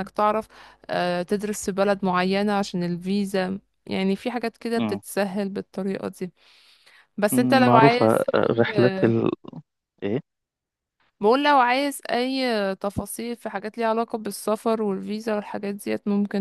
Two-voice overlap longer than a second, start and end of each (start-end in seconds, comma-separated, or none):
none